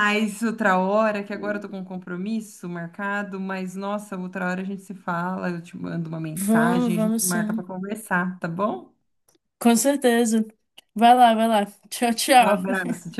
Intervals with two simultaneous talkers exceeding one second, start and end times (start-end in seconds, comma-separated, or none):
6.3-7.7